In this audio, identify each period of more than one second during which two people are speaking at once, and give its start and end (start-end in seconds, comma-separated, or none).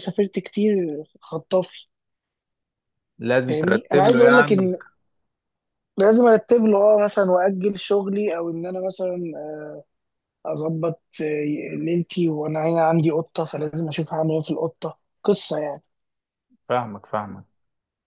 3.5-4.7